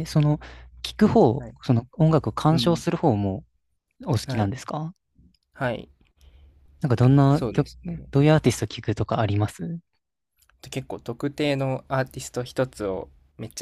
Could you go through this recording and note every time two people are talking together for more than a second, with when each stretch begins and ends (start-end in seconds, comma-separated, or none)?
none